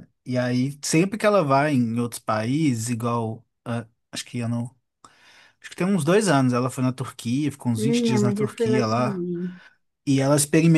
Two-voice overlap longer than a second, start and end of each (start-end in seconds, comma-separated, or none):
7.8-9.2